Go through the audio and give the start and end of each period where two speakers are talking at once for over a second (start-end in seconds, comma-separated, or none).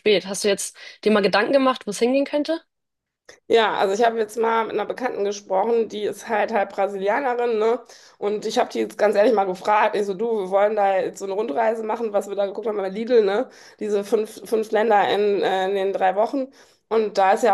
none